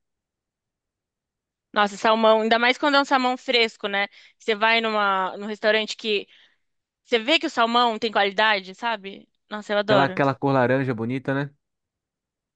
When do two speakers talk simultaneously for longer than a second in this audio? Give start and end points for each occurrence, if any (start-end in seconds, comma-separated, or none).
none